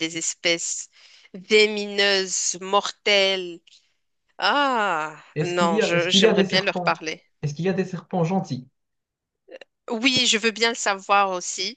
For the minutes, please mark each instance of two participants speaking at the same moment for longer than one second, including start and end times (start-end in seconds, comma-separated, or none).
5.3-7.0